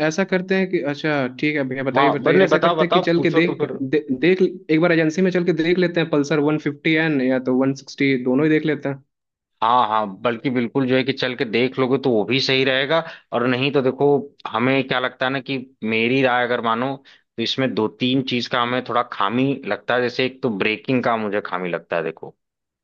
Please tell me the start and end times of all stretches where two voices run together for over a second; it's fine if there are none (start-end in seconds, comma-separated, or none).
2.0-3.8